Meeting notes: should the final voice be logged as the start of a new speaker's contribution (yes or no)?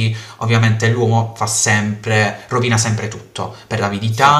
no